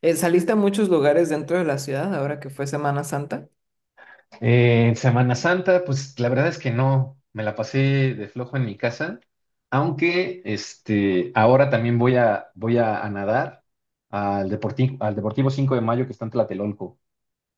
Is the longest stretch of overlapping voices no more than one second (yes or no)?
yes